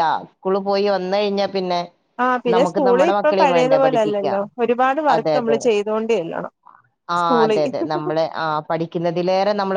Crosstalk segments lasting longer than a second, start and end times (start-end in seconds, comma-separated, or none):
2.6-4.4